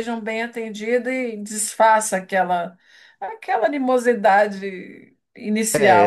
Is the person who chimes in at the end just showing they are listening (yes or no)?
no